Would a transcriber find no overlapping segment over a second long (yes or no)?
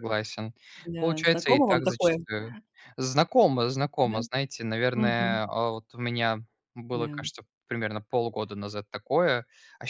no